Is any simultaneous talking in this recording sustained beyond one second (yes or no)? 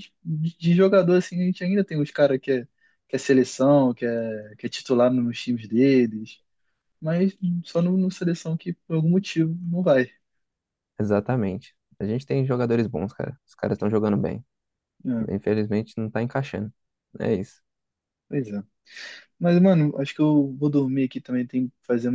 no